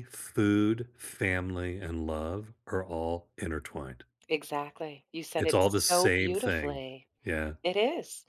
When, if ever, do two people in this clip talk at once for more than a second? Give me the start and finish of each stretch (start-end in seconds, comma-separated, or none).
5.4-6.8